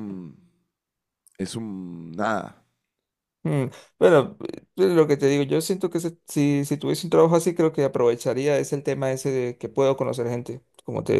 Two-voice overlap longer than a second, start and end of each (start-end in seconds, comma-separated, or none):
none